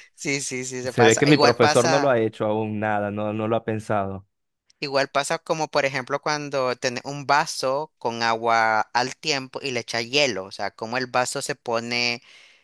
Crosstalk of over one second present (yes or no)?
yes